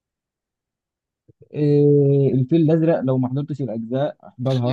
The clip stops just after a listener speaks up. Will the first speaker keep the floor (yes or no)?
no